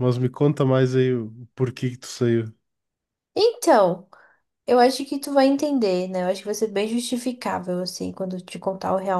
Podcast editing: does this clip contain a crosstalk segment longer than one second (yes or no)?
no